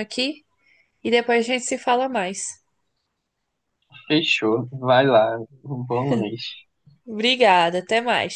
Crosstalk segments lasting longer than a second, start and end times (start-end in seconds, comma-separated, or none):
none